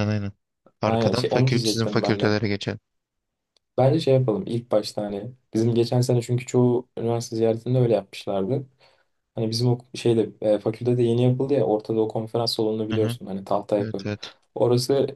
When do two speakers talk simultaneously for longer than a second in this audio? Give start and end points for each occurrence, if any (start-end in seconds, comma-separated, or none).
0.8-2.3